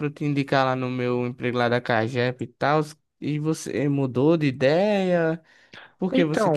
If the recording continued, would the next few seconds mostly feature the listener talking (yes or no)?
no